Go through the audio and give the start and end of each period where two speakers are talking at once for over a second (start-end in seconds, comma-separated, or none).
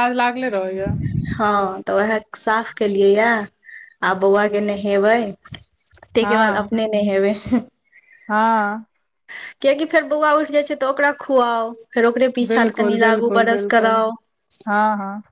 12.5-13.9